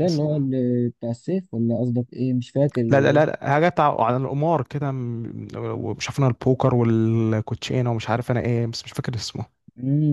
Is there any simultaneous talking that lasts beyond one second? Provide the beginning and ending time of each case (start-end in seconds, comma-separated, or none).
none